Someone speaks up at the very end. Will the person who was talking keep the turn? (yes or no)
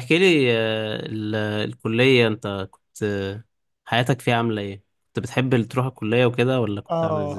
no